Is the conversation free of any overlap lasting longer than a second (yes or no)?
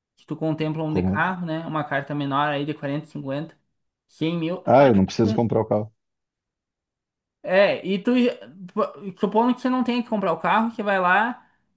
yes